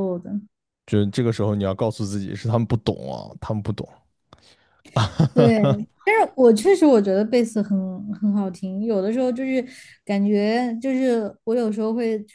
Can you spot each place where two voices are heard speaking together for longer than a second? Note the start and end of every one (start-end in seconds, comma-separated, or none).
none